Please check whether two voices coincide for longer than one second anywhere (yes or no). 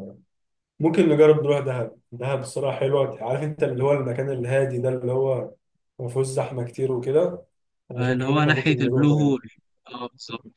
yes